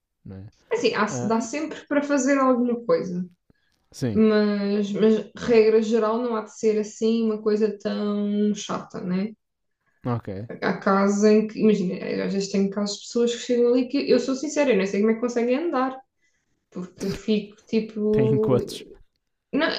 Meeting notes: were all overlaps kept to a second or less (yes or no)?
yes